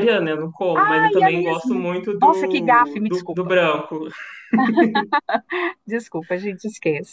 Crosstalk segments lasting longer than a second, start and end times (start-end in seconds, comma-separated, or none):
0.8-3.5